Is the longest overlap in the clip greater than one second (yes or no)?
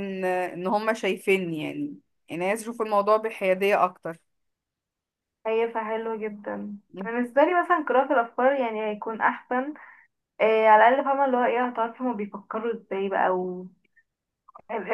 no